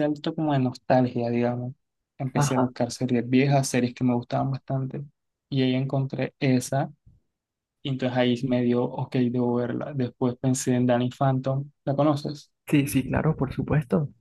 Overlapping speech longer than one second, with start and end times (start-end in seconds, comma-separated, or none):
none